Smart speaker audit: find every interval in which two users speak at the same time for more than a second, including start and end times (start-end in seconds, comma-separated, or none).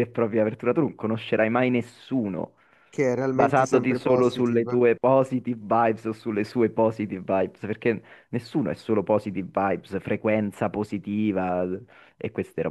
3.3-4.8